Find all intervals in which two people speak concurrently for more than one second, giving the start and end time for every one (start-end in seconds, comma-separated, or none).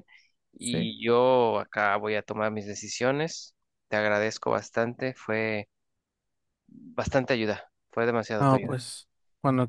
none